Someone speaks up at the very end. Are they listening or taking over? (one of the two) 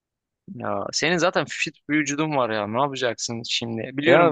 taking over